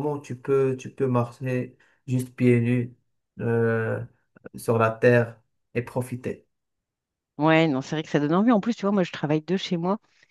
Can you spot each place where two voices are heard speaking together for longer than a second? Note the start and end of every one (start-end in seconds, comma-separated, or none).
none